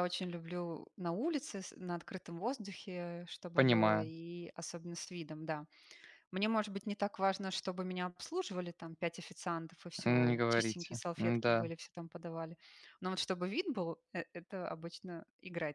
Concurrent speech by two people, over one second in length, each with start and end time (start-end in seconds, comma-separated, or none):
10.0-11.7